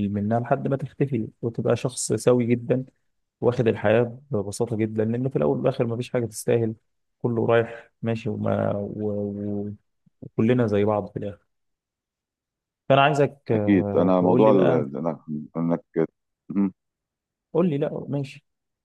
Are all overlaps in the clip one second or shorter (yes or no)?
no